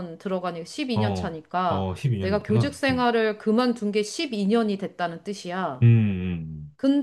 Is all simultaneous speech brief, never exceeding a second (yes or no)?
no